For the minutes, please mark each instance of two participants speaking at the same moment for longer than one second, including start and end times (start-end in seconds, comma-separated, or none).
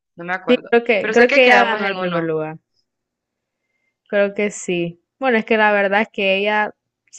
0.7-2.3